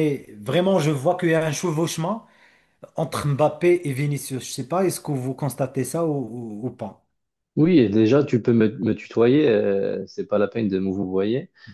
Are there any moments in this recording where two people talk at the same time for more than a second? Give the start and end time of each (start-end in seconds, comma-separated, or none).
none